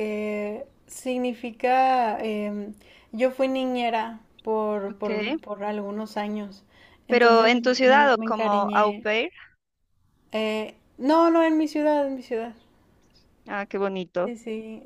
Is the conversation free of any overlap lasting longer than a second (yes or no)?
no